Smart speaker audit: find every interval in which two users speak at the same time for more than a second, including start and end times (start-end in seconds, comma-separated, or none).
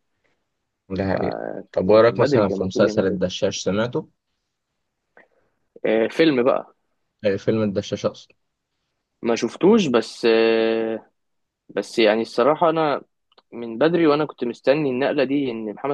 1.9-3.2